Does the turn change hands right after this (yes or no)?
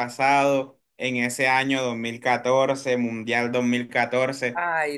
no